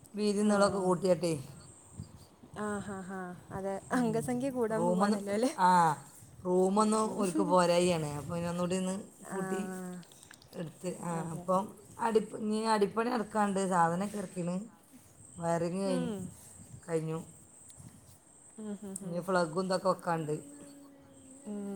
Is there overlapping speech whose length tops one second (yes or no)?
no